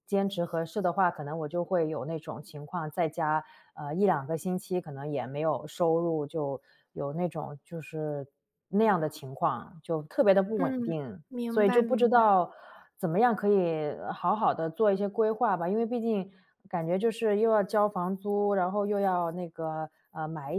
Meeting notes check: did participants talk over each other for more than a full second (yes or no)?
yes